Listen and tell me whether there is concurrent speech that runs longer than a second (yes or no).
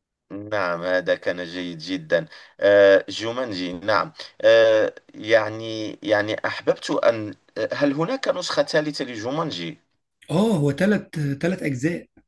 no